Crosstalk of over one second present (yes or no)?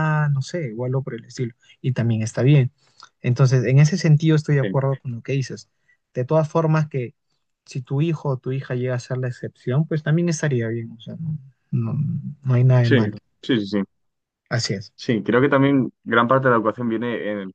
no